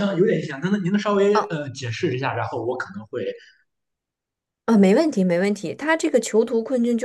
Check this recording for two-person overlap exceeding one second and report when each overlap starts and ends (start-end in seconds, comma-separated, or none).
none